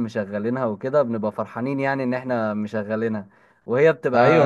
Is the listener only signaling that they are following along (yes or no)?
no